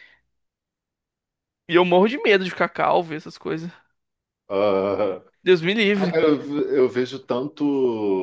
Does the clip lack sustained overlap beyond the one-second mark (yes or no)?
yes